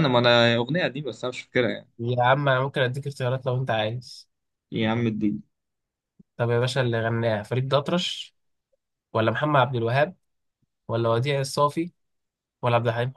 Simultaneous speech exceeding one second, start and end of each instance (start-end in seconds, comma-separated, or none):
none